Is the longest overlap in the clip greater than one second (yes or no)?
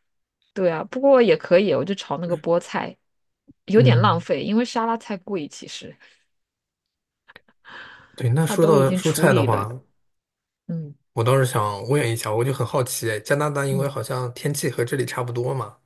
yes